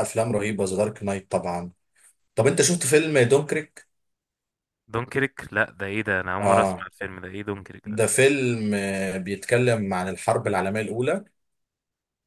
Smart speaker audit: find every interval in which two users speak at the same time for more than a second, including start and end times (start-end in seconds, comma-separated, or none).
none